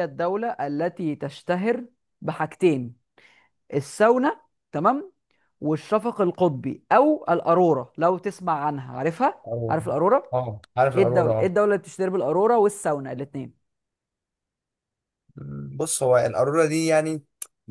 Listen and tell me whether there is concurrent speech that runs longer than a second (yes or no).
no